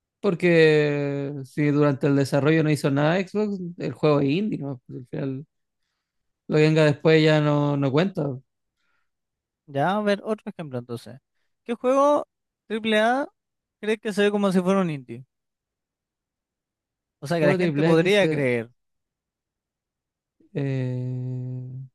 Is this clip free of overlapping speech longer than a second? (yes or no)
no